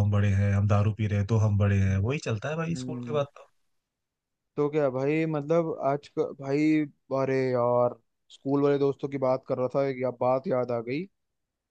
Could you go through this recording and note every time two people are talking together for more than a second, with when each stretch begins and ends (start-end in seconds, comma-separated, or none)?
none